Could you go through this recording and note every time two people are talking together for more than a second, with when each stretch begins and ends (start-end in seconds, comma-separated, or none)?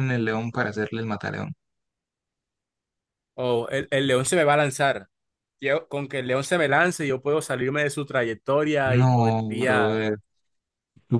8.8-10.0